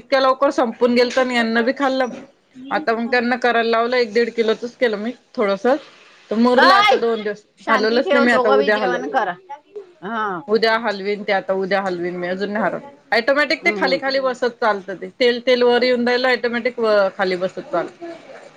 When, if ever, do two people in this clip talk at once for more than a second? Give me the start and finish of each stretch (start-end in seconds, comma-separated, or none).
7.6-9.0